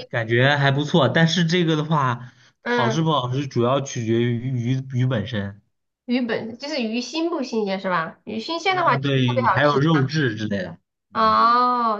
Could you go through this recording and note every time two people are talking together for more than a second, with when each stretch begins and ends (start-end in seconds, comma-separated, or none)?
8.7-10.1